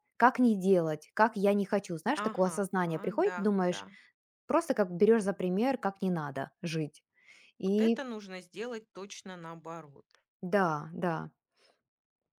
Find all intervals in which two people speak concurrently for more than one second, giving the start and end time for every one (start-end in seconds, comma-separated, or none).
none